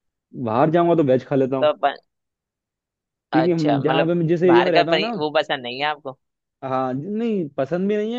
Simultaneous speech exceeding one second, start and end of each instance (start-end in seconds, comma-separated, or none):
3.3-5.1